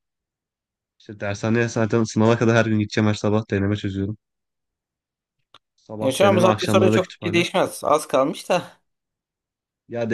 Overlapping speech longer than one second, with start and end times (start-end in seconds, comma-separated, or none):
6.0-7.5